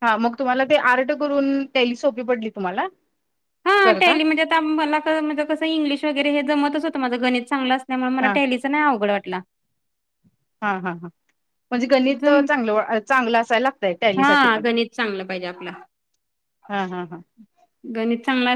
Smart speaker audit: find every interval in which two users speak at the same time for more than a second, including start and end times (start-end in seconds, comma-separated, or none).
none